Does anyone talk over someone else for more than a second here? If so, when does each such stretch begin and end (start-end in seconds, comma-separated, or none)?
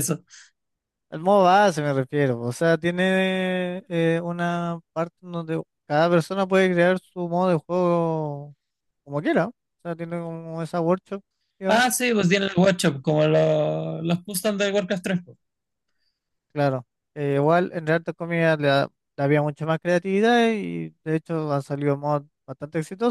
none